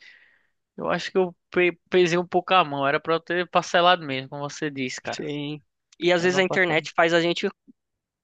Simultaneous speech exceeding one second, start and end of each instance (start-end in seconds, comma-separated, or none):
none